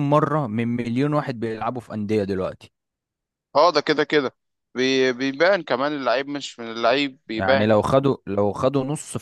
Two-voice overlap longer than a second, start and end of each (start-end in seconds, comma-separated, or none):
none